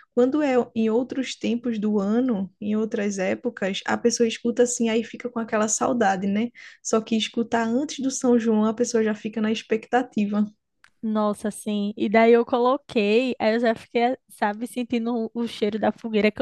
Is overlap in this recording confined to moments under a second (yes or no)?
yes